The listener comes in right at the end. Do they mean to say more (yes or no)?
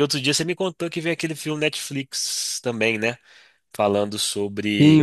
yes